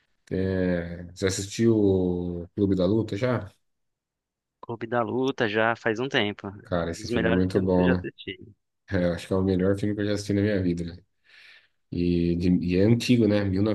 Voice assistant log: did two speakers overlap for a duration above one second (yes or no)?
yes